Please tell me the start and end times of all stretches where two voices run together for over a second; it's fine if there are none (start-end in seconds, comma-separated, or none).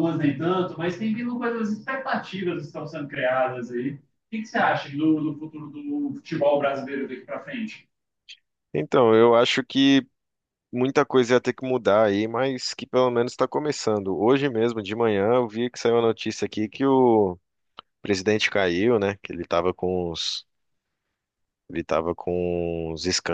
none